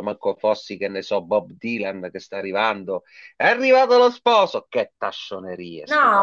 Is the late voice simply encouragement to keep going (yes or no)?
no